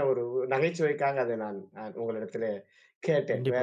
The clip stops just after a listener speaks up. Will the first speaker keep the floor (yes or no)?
yes